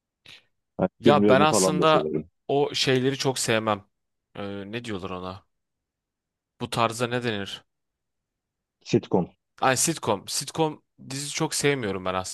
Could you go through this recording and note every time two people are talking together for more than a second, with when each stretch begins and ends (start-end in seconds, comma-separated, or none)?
1.0-2.3